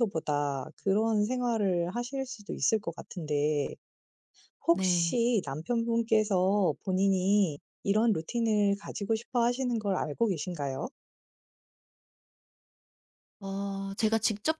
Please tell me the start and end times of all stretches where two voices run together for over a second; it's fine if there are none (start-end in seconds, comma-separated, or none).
none